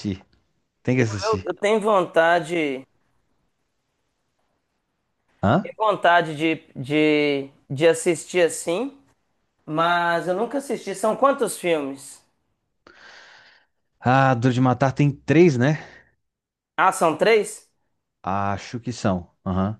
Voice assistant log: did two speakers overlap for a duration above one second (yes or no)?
no